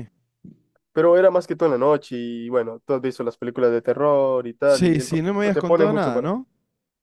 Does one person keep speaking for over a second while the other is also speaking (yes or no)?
yes